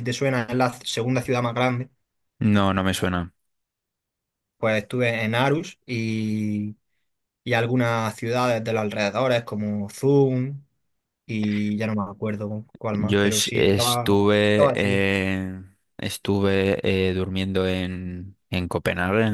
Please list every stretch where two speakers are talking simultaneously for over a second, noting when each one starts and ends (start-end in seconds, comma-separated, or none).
12.9-15.0